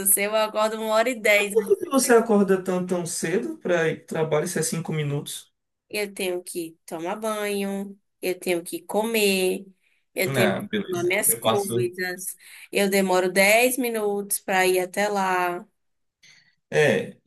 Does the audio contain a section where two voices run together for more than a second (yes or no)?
yes